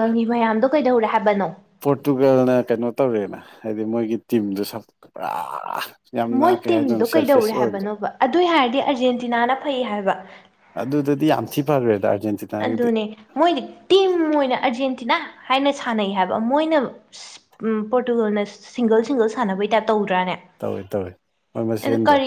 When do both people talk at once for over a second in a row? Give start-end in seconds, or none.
6.4-7.9